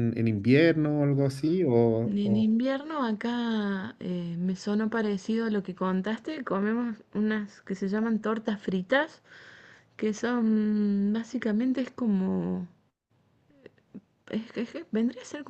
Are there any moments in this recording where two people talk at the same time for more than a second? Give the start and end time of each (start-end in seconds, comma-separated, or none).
none